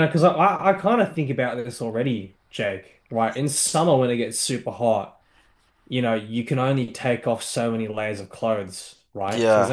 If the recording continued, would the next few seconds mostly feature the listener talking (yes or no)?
no